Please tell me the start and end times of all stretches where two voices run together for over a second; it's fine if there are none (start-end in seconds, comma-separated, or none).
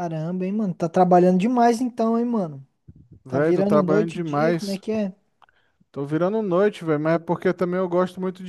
3.3-4.8